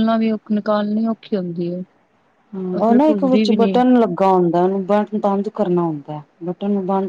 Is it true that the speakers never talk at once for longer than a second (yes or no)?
yes